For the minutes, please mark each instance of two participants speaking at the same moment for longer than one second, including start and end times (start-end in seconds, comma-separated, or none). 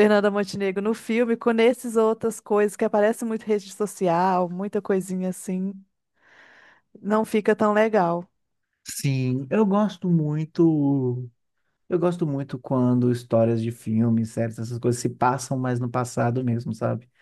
none